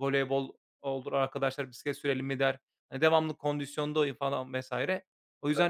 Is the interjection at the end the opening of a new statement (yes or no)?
no